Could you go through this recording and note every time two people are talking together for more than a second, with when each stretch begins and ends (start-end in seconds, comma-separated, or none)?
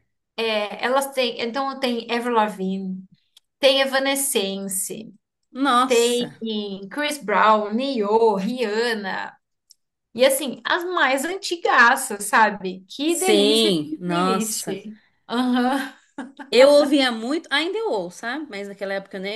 13.1-14.6